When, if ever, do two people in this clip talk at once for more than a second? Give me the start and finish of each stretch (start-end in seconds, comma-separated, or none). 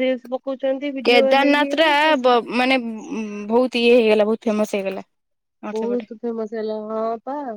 none